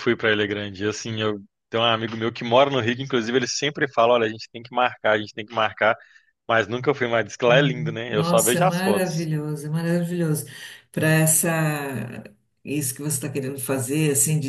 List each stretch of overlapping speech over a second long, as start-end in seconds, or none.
7.5-9.3